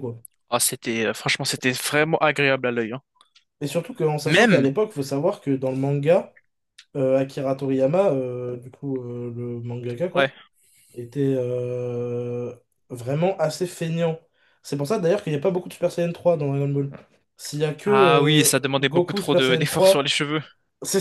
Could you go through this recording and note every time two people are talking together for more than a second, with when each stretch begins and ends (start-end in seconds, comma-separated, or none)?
17.8-20.1